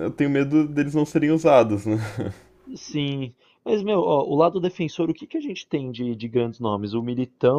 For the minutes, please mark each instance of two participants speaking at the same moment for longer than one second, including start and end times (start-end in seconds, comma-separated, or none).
none